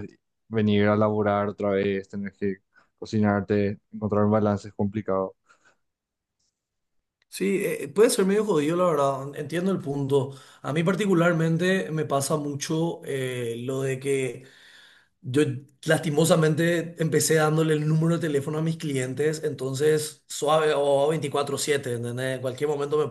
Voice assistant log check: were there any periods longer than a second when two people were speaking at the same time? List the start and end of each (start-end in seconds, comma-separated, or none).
none